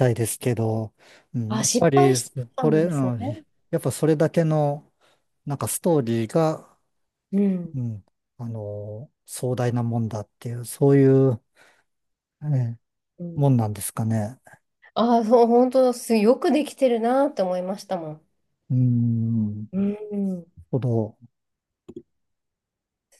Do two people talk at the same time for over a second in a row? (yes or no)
yes